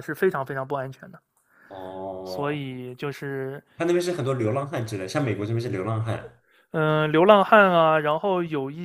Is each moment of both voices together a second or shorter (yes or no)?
yes